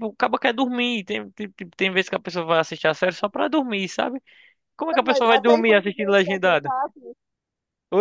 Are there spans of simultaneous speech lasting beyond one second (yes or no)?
yes